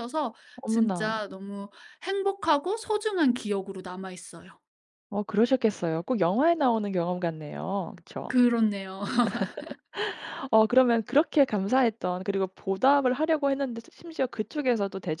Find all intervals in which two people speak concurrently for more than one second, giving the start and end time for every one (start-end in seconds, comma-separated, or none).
none